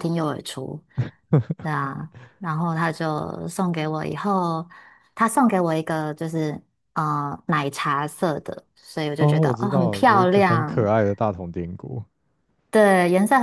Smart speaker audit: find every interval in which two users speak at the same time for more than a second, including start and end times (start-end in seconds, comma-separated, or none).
9.2-10.9